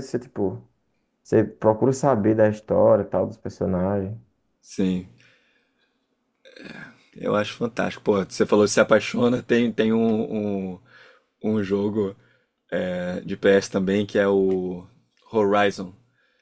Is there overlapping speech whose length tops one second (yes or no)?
no